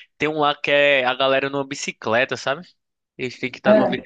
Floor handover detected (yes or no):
no